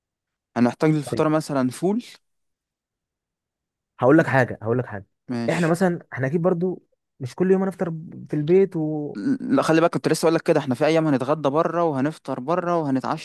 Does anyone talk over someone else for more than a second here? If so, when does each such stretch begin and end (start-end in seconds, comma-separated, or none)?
none